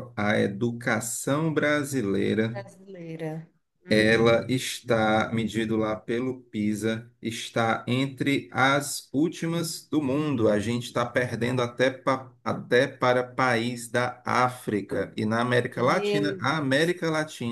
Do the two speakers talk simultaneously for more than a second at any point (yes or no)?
yes